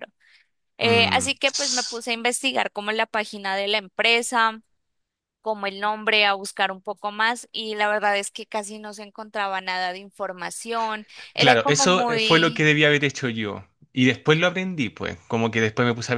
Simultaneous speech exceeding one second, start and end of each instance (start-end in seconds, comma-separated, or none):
11.4-12.7